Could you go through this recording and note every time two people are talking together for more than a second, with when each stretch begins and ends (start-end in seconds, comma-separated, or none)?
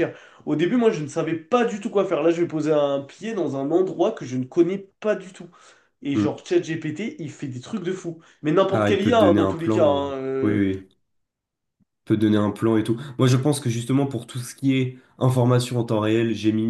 8.7-10.6